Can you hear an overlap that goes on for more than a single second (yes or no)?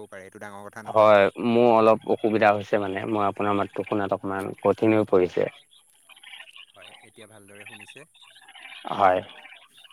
no